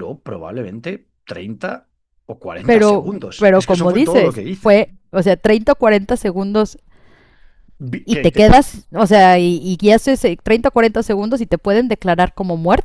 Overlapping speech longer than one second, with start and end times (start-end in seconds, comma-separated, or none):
2.6-4.8